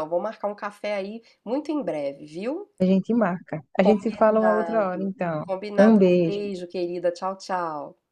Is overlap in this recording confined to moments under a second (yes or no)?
no